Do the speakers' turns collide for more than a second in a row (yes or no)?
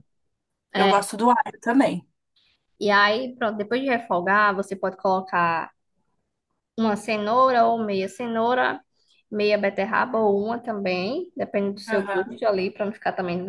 no